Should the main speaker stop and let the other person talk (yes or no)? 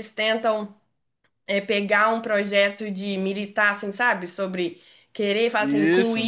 no